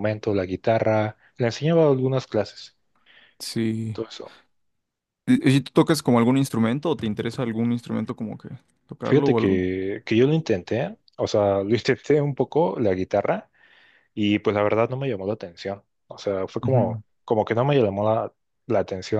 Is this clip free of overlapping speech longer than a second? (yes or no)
yes